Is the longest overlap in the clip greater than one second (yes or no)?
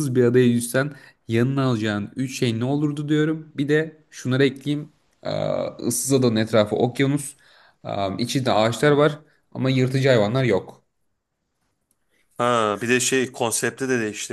no